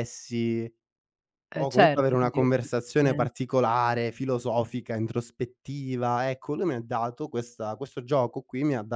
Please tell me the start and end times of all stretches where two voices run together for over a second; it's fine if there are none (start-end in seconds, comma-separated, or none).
1.6-3.3